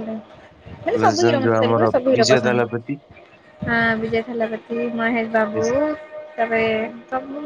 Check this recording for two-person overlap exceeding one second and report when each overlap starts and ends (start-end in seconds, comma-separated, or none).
1.0-2.9